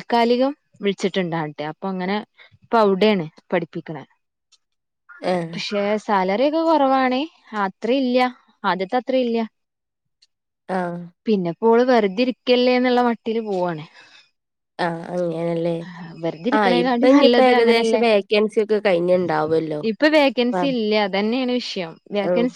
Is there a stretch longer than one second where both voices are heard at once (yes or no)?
yes